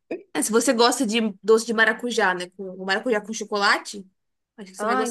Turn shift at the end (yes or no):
yes